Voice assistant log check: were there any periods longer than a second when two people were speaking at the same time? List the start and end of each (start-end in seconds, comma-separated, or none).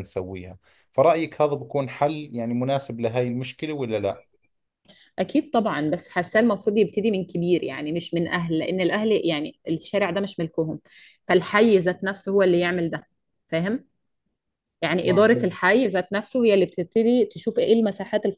none